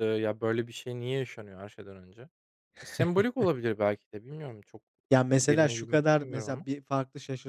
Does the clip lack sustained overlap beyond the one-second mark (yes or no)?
no